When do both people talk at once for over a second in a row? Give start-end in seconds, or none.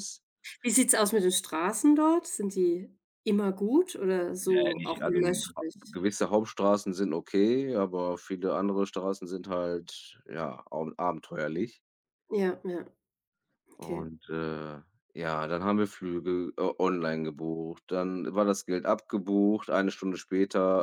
4.4-6.0